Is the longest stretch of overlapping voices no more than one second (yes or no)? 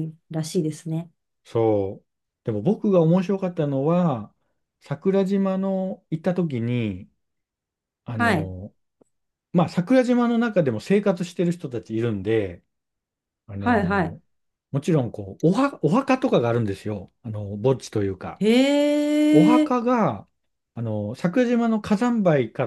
yes